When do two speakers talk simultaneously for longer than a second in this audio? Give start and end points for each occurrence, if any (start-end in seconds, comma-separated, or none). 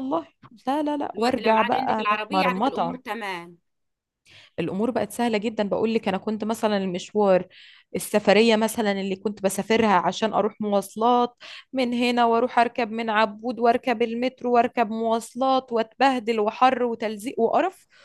1.1-3.0